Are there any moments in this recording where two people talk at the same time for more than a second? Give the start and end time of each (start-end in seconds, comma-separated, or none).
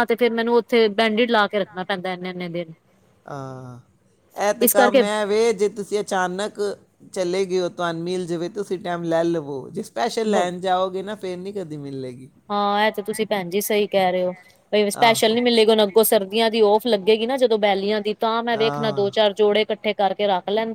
none